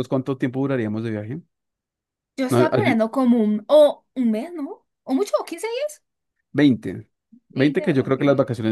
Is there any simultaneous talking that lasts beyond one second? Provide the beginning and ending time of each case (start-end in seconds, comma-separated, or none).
none